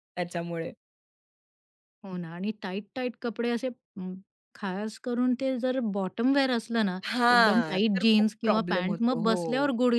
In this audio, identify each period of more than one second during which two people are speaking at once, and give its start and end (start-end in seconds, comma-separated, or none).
7.1-9.4